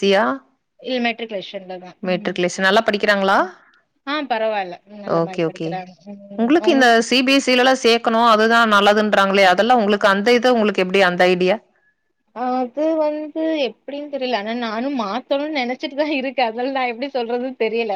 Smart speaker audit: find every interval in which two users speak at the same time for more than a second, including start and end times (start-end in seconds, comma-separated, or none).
none